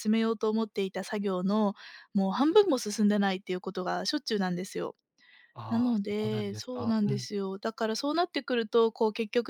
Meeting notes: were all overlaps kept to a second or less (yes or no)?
no